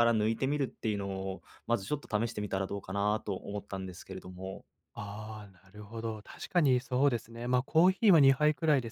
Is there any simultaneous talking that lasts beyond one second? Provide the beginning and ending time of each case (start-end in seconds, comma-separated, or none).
none